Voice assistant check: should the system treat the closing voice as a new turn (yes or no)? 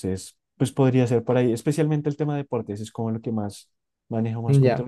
yes